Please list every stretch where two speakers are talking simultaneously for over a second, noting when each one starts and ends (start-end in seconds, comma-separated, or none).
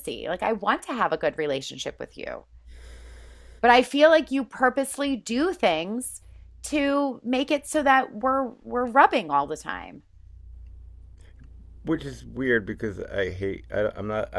none